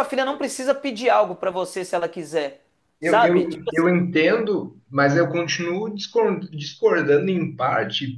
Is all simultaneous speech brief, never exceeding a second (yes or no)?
yes